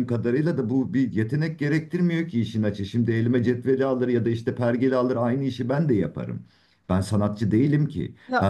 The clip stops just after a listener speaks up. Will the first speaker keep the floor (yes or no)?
yes